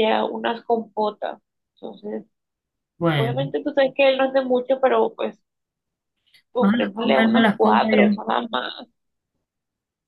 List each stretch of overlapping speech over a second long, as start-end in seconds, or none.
6.6-8.2